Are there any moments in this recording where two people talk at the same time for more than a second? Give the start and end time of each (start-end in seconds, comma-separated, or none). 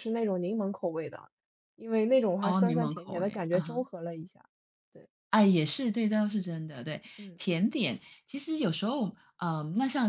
2.4-3.8